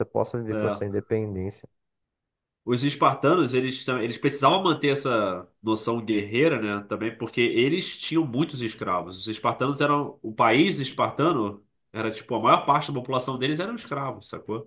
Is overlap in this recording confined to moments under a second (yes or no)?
yes